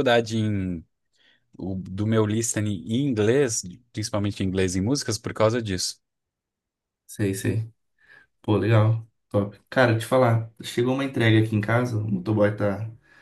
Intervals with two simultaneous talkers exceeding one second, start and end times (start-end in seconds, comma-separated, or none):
none